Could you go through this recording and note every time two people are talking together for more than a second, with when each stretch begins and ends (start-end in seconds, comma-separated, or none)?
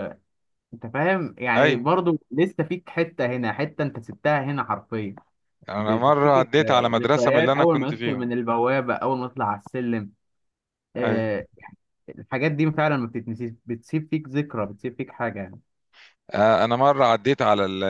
5.8-8.3